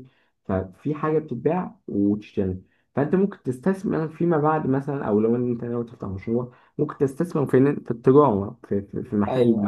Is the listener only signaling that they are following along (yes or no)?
no